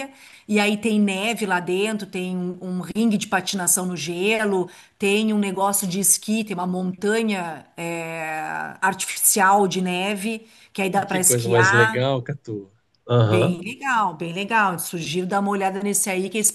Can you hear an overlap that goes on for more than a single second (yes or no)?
yes